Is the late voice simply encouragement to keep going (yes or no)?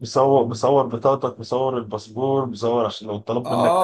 no